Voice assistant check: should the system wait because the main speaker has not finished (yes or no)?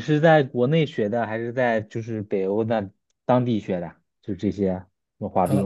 no